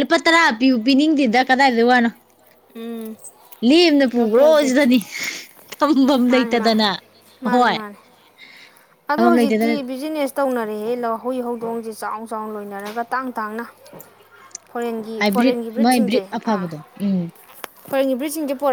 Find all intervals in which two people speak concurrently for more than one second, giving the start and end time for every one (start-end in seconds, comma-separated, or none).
none